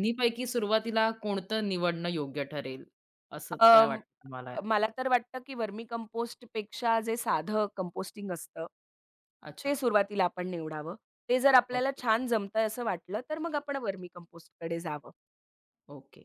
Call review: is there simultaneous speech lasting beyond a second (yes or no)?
no